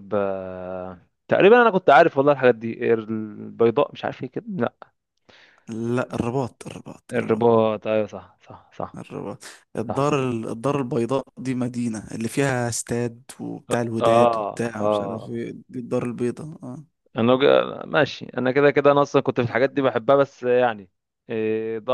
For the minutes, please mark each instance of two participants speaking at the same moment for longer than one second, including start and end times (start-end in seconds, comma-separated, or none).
13.8-15.4